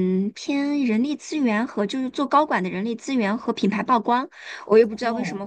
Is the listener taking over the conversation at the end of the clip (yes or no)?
no